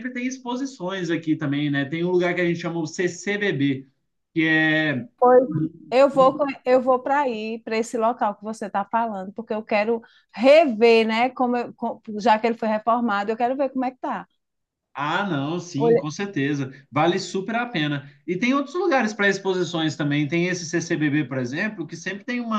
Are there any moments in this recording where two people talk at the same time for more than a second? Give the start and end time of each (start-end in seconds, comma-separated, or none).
none